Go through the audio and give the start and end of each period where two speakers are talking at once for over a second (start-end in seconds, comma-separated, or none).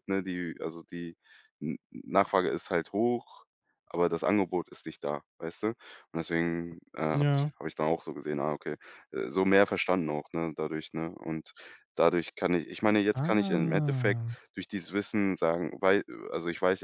13.1-14.3